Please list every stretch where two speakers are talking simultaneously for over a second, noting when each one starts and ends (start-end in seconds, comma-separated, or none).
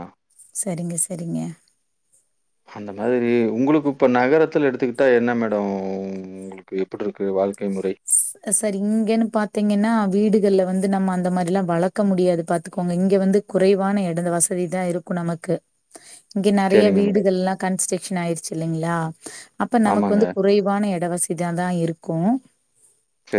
none